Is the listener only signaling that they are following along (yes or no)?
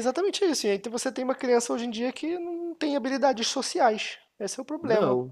yes